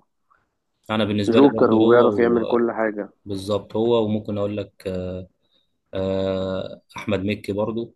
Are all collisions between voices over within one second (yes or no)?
no